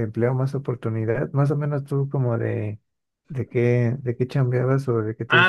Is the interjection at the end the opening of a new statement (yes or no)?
yes